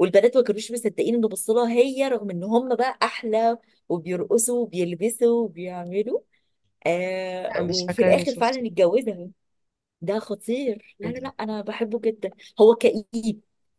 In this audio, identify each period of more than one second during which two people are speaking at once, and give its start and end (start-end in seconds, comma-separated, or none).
7.5-8.7